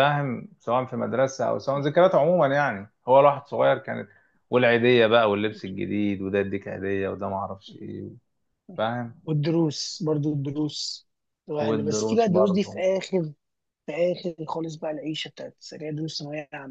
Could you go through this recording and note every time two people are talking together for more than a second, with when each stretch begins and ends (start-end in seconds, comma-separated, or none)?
11.6-12.8